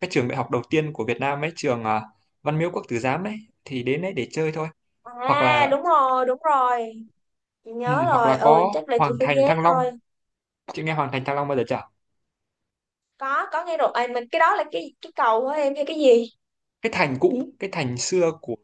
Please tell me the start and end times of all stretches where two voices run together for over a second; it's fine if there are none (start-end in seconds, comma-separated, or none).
7.8-9.8